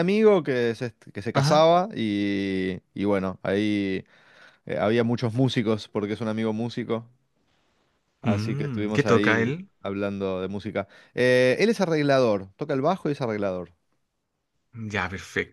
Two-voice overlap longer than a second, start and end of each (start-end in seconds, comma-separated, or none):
8.2-9.7